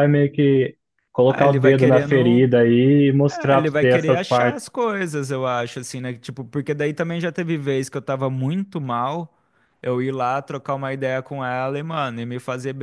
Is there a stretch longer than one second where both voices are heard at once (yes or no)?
yes